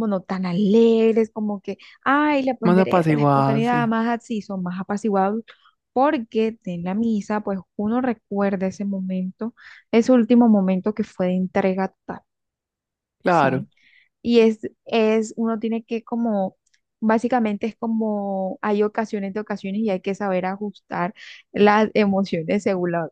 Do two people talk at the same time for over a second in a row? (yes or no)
yes